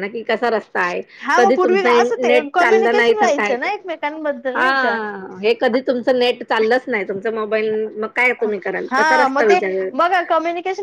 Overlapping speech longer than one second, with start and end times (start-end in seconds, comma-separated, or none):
1.4-3.5